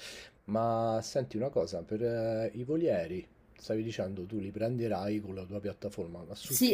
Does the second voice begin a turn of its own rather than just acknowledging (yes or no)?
yes